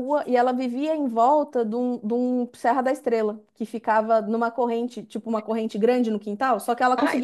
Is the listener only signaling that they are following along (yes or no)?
yes